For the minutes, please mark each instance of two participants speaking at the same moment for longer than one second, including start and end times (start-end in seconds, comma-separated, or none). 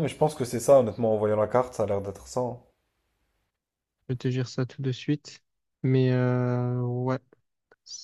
none